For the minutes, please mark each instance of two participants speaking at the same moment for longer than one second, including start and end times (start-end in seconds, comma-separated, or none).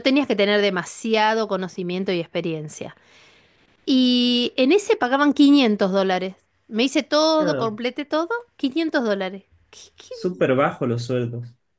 none